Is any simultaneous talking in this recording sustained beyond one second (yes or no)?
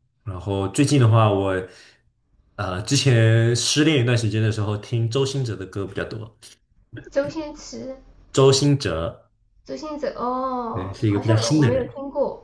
yes